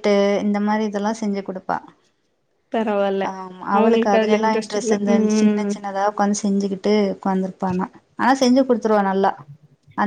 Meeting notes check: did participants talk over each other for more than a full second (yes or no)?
yes